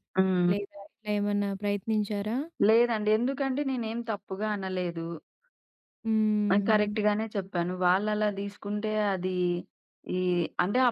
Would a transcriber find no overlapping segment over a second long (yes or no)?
yes